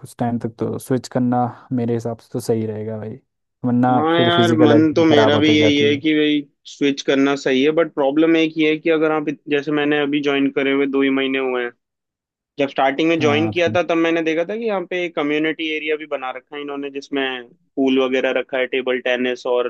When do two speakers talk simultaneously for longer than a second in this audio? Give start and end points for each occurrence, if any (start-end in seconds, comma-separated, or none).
3.9-6.0